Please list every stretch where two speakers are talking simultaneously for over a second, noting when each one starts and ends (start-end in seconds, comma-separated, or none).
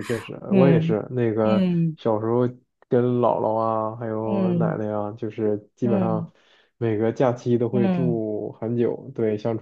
none